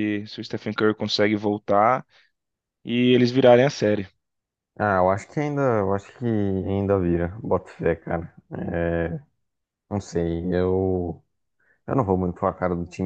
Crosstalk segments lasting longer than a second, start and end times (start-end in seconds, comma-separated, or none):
none